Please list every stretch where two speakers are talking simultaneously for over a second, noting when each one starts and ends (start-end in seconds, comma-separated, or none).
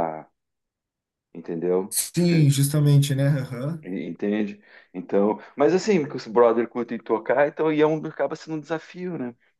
none